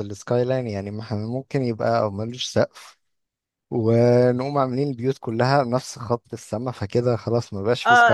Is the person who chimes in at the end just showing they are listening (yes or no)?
no